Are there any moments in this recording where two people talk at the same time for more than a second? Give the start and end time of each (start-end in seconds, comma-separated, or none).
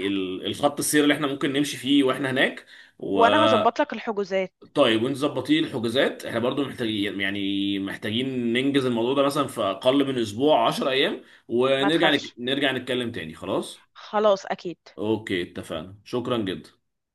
none